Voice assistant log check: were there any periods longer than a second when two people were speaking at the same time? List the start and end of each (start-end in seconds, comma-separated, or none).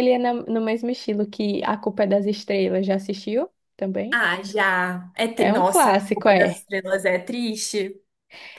5.4-6.6